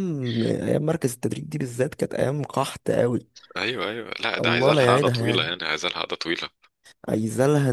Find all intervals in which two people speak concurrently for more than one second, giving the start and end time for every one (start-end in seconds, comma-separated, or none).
4.4-5.6